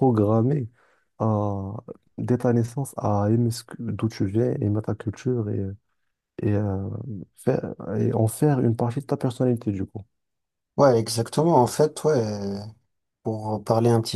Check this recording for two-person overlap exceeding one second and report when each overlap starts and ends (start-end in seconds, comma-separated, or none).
none